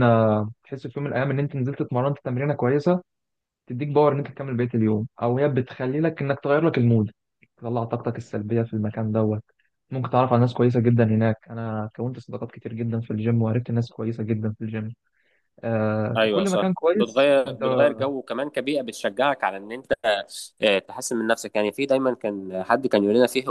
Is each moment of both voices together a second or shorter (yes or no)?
no